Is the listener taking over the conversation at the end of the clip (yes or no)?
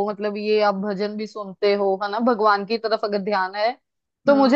no